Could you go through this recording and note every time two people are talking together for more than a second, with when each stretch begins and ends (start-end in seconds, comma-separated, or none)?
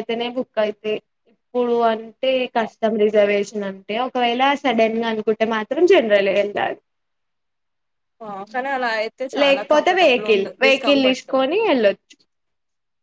9.4-11.3